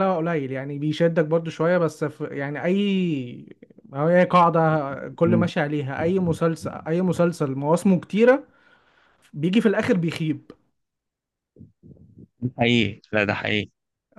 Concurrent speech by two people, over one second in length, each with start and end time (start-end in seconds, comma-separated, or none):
none